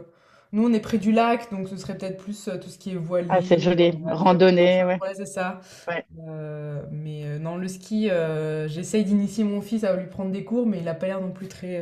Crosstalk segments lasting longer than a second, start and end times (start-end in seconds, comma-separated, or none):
3.3-5.0